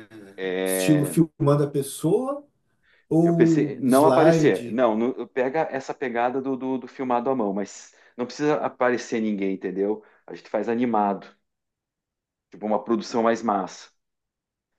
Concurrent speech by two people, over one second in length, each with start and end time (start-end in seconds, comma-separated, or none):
3.2-4.8